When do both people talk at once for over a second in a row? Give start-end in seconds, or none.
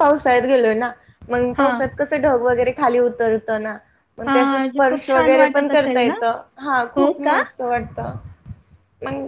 4.3-6.1